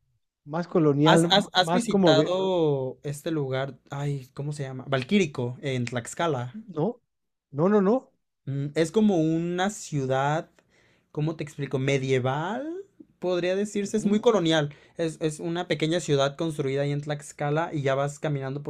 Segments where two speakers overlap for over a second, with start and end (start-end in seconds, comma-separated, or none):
1.0-2.3